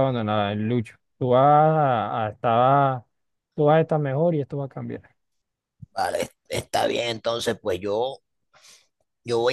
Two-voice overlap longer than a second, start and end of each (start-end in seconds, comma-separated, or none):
none